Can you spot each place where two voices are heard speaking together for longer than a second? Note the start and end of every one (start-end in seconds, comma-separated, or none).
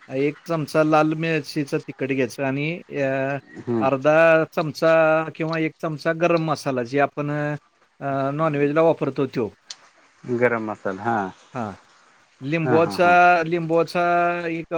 none